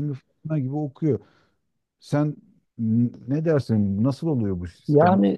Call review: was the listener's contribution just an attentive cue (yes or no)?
no